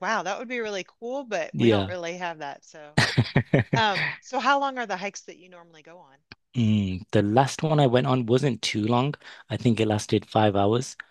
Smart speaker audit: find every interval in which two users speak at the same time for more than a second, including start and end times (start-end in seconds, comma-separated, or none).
none